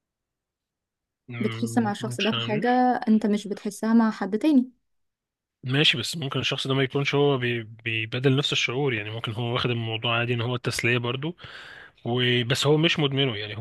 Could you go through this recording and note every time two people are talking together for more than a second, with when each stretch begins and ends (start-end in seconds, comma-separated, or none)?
1.4-2.7